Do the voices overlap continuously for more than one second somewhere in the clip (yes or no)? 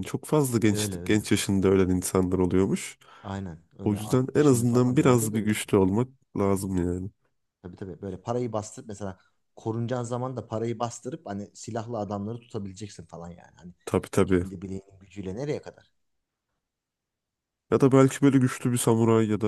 yes